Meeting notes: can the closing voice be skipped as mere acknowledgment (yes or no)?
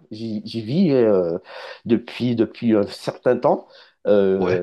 yes